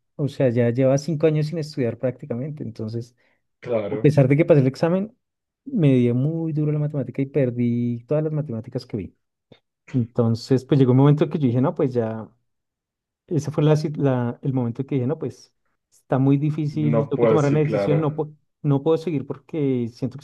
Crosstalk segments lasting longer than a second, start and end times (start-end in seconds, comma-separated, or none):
16.8-18.1